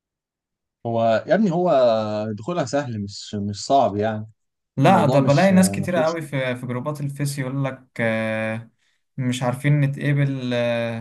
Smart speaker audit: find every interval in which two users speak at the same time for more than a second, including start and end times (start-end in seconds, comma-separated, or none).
4.8-6.2